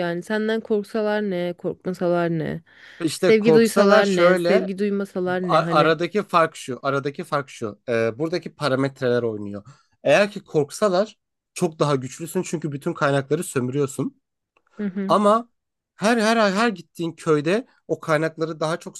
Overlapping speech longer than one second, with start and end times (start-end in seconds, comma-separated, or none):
3.2-4.7